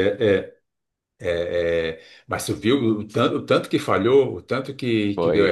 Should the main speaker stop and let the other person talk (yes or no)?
yes